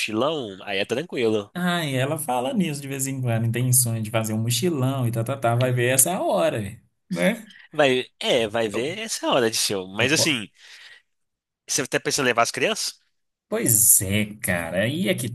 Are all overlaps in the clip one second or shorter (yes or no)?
yes